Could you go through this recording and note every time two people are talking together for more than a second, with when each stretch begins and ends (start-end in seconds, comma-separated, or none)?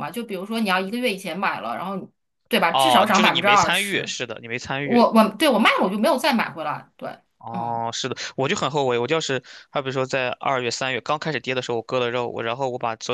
2.7-4.1